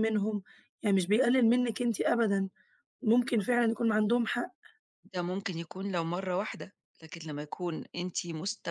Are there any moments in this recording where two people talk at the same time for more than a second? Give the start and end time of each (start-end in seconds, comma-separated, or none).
none